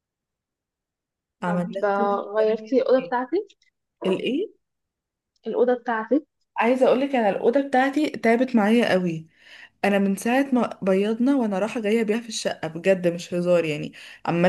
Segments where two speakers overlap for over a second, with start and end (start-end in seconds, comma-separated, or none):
1.4-3.1